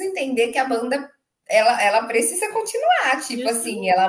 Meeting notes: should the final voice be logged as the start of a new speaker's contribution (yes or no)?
no